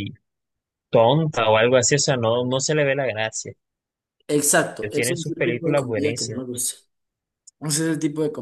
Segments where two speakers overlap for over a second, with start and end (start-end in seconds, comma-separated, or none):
4.8-6.4